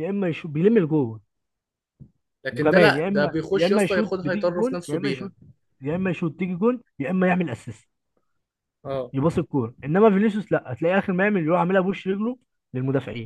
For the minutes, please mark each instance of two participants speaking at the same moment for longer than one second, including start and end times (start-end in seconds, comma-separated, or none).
2.5-5.3